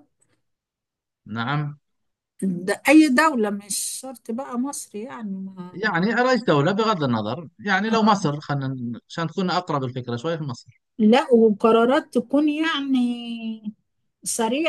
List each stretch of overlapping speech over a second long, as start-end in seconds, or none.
none